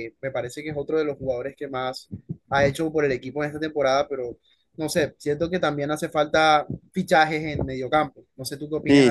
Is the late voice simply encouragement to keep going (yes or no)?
no